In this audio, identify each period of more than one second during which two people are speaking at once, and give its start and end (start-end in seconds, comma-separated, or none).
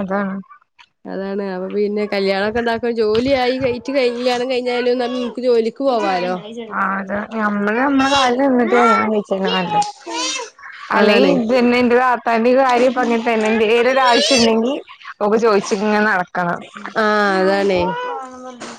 none